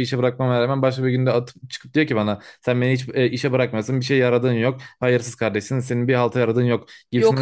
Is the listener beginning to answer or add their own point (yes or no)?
no